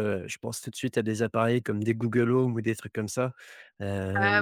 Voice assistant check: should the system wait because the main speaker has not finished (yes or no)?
yes